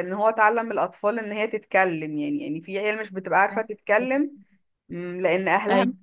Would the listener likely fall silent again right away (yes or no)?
yes